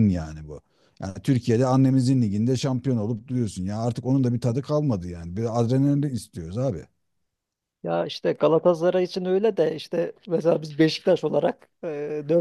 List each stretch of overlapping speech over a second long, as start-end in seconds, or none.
none